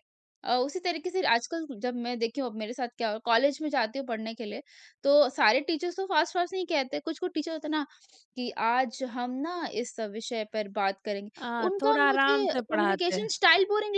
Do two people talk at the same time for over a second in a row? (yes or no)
yes